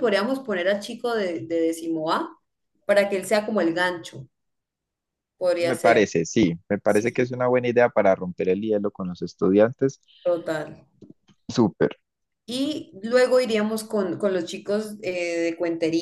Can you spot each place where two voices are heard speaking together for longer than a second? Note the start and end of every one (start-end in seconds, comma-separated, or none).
none